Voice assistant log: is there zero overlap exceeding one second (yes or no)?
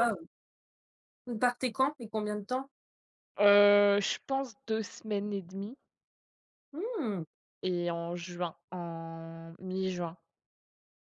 yes